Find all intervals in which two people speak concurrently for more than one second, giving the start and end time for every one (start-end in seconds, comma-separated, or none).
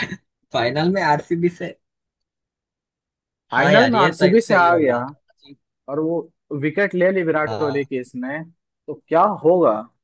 3.6-5.0